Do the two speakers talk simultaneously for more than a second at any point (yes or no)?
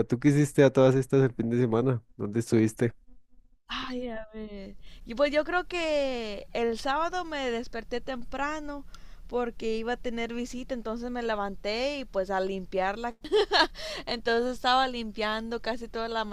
no